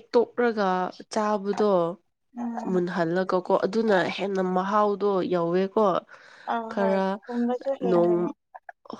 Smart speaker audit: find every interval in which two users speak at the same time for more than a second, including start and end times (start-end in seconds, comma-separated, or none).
6.7-8.2